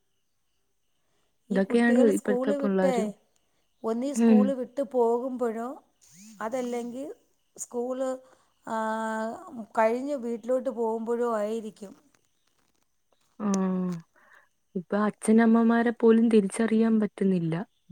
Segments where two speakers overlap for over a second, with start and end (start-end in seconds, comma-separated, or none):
1.6-3.0